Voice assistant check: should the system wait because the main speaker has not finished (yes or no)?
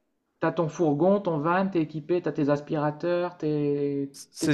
no